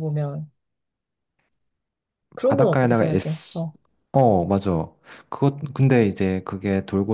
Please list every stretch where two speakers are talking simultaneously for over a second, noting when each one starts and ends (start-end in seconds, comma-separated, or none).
2.4-3.7